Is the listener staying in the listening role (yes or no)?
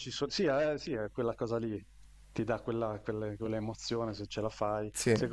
yes